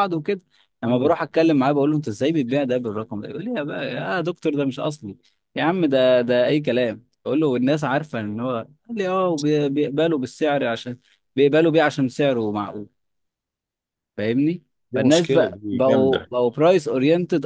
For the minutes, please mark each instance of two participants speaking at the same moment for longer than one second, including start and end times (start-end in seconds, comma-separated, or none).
14.9-16.3